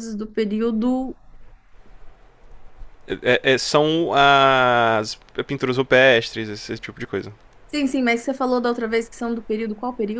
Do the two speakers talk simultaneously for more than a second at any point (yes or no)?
no